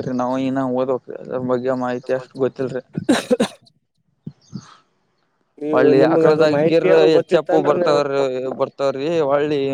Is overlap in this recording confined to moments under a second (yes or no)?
no